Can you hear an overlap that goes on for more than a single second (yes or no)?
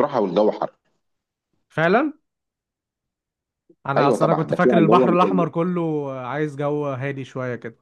yes